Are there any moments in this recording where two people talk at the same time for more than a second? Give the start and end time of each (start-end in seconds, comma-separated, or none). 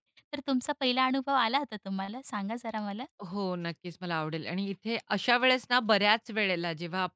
none